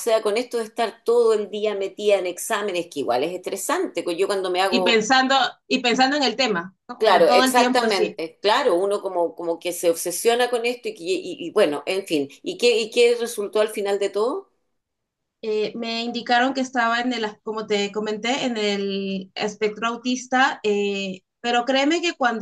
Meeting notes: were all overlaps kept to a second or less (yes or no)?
no